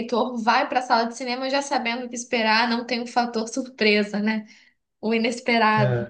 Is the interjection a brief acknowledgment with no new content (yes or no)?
yes